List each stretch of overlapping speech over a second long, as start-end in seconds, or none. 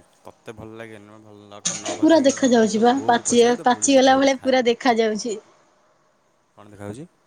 2.0-5.1